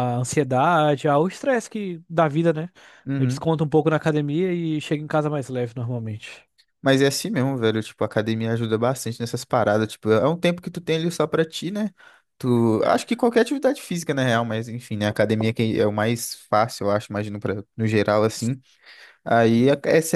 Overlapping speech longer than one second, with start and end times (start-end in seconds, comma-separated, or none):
none